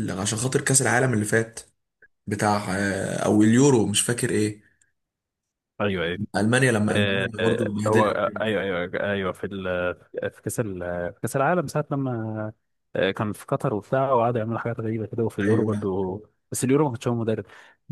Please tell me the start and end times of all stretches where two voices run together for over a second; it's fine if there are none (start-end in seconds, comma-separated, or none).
6.9-8.2